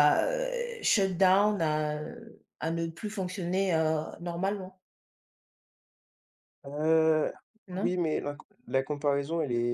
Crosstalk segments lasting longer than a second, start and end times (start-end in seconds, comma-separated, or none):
none